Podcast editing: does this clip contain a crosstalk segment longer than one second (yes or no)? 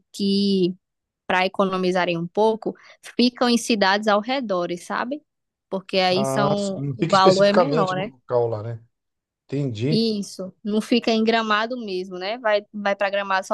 yes